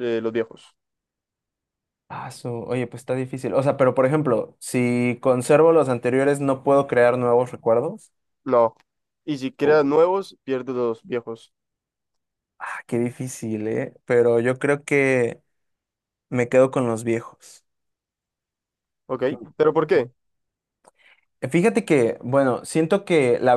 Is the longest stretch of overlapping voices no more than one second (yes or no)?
yes